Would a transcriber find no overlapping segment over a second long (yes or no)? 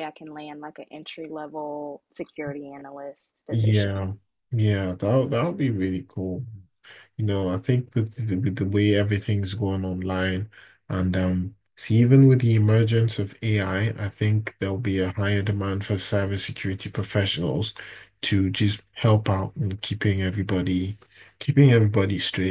yes